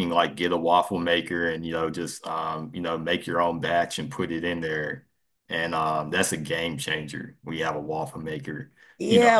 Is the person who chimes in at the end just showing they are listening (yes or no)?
no